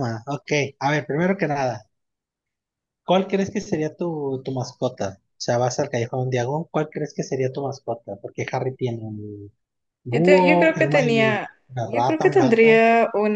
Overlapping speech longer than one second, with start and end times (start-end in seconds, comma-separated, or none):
10.1-12.8